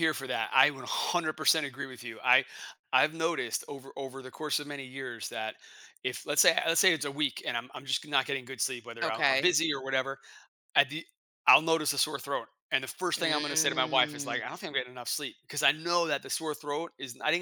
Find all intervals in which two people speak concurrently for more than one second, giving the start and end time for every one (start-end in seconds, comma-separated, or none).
13.2-14.4